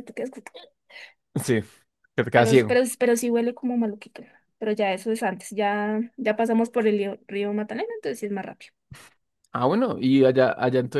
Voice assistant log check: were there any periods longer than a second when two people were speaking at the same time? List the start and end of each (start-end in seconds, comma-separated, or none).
none